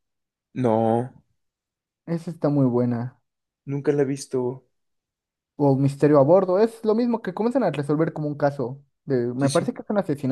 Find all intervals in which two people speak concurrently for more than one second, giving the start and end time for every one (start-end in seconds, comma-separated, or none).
none